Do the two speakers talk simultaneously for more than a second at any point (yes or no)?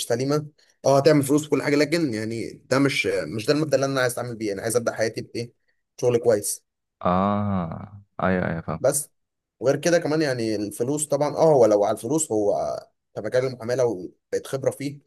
no